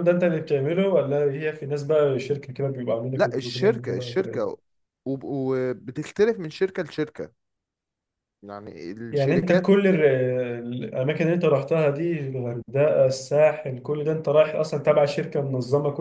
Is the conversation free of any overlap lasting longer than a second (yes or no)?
no